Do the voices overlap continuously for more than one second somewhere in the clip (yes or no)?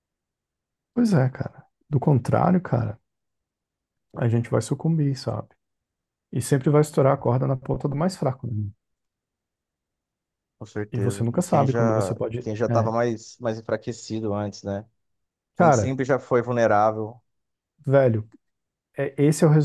yes